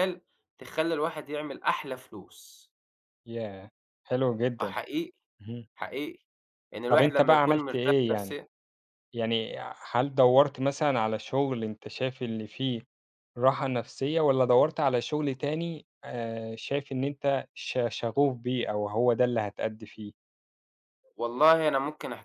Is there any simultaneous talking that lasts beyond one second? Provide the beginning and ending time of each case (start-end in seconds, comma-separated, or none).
6.9-8.4